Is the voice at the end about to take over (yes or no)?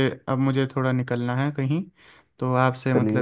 no